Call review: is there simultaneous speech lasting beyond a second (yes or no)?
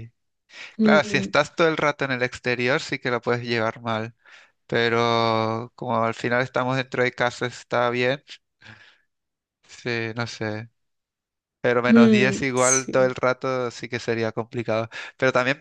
yes